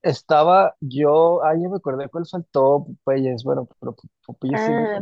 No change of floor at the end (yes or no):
no